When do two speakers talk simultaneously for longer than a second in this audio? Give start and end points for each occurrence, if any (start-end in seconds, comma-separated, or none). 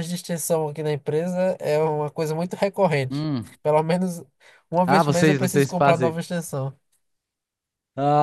4.9-6.2